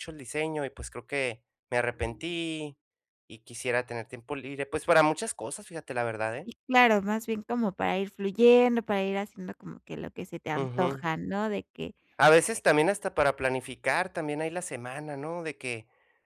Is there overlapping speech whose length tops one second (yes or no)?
no